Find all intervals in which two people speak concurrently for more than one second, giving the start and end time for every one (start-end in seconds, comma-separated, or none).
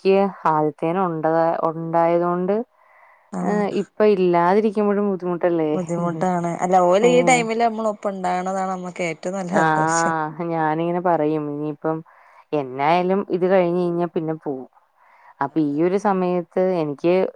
none